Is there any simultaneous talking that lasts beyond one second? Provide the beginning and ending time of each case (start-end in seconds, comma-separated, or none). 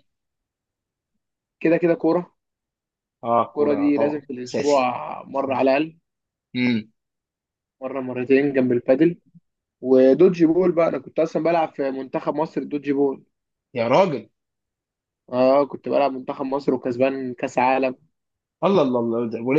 3.5-4.9